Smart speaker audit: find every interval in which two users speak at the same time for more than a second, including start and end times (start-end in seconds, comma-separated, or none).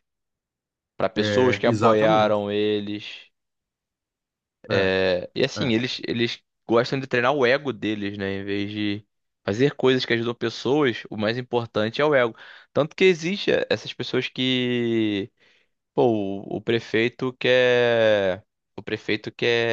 1.1-2.5